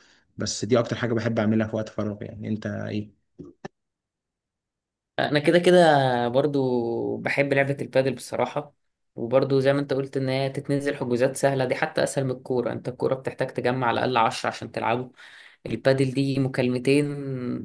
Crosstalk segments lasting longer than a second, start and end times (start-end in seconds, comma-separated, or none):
none